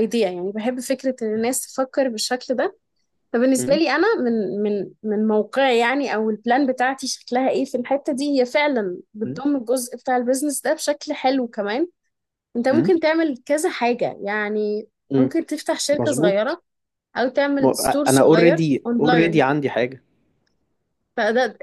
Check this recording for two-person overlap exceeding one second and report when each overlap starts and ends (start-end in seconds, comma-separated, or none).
17.6-19.4